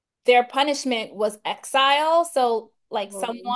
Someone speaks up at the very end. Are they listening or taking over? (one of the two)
listening